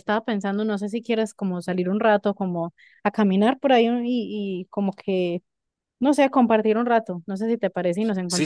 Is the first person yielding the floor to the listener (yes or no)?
yes